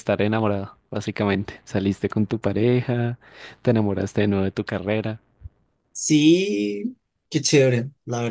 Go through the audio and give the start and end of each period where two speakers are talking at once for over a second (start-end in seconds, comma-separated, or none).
none